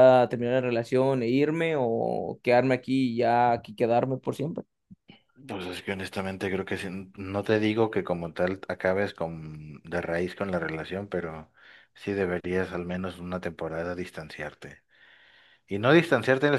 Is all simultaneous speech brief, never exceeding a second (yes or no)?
yes